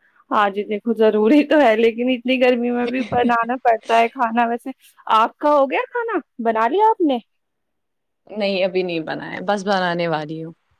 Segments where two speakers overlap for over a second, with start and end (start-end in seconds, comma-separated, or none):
none